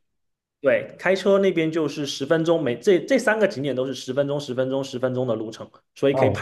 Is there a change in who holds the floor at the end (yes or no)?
yes